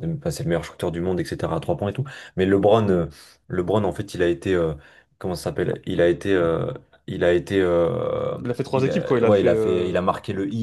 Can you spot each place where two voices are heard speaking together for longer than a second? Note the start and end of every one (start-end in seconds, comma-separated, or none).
8.7-9.9